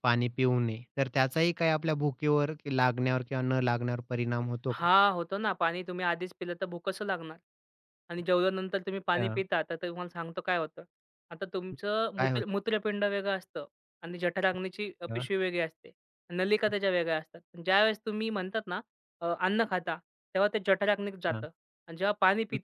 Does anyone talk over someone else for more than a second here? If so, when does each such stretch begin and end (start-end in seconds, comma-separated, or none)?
none